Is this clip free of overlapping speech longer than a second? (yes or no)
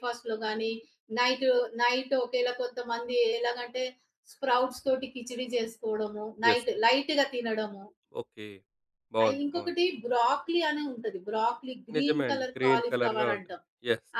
no